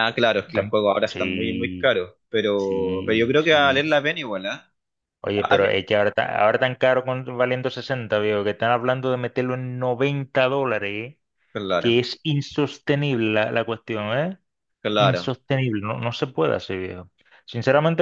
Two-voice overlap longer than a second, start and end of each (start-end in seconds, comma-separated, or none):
0.5-1.9, 2.6-3.9